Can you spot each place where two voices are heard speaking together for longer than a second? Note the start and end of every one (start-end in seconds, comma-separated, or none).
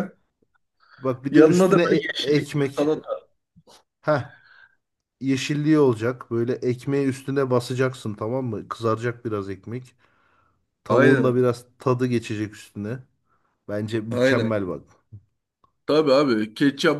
1.3-2.9